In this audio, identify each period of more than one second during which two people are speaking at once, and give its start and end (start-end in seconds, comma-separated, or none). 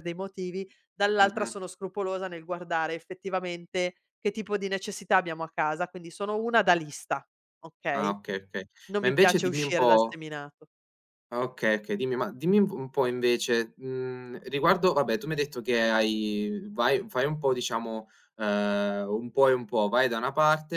9.0-10.2